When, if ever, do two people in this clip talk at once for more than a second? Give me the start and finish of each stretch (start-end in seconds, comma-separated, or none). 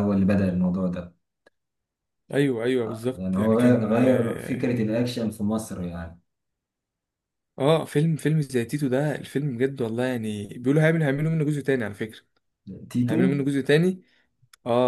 2.8-4.7